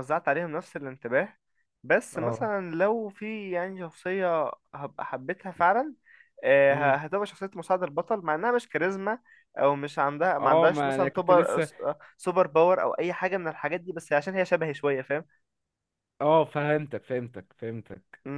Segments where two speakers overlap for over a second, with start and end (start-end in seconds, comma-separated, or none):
10.4-11.7